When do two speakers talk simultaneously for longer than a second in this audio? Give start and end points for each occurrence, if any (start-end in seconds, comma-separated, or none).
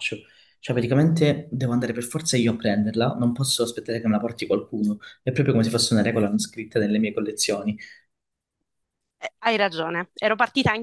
none